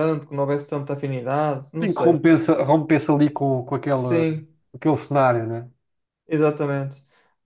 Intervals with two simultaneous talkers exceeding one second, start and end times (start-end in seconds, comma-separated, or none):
none